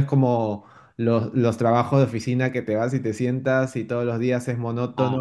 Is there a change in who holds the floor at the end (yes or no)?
no